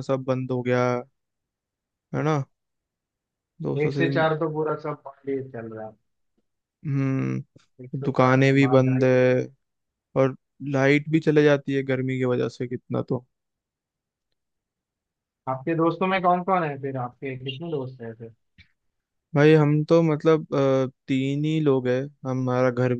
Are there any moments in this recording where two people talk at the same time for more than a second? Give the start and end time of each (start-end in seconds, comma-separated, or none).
7.8-9.2